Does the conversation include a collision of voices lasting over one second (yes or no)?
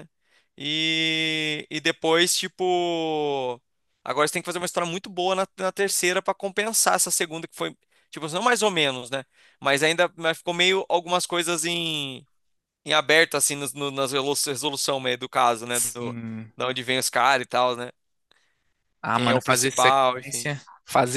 yes